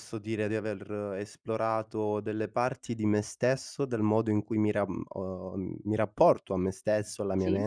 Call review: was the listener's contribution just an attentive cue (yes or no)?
yes